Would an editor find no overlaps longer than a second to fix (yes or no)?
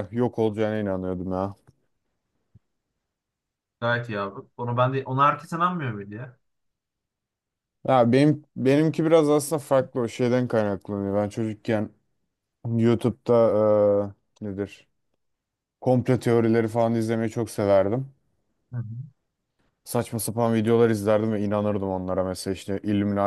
yes